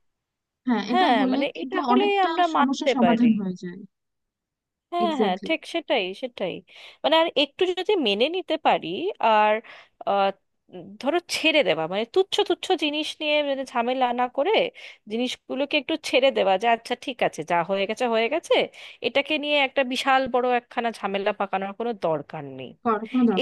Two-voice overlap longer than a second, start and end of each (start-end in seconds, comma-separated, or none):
0.9-3.3